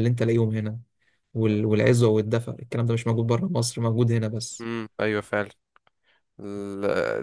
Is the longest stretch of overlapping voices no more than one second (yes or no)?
yes